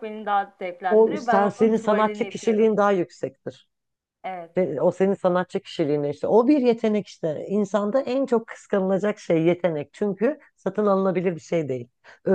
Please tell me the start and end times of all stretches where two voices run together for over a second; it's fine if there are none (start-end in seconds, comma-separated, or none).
0.9-2.7